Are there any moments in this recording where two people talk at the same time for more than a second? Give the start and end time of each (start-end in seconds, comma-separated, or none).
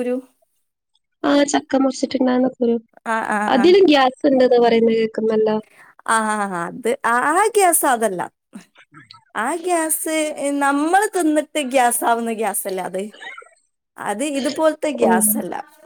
none